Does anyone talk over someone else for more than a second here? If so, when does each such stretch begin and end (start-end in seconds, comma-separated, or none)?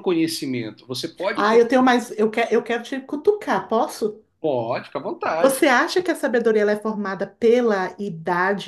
none